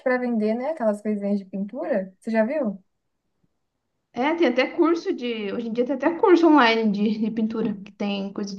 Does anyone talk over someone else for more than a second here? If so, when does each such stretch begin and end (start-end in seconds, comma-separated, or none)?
none